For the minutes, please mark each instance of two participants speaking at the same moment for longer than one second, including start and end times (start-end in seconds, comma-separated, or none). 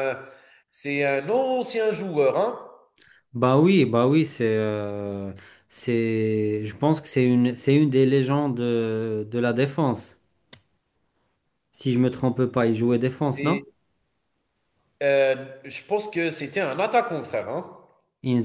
none